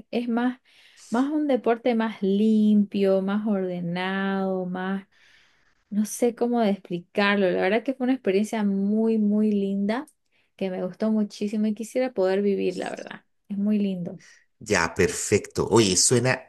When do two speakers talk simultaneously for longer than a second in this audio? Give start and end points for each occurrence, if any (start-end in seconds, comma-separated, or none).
none